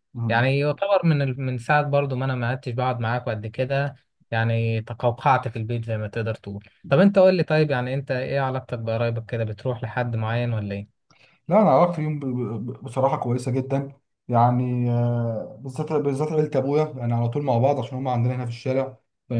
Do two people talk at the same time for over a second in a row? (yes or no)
no